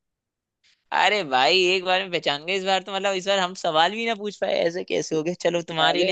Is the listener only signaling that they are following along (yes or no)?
yes